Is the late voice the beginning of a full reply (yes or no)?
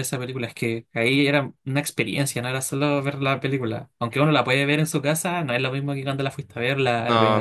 yes